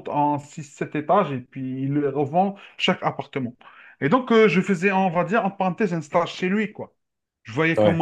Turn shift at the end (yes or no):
no